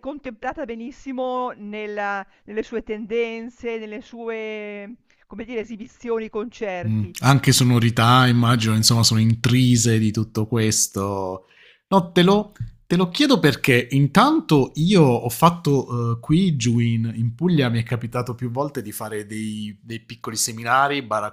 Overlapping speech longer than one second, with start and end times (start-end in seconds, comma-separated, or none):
none